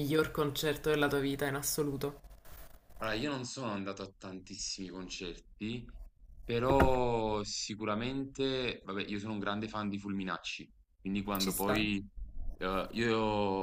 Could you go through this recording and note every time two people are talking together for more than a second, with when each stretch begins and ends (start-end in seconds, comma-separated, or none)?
none